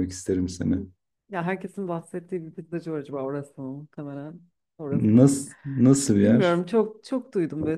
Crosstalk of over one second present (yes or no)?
no